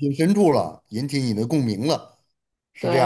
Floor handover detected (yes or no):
yes